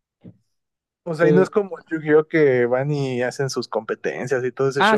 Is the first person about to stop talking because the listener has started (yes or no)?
yes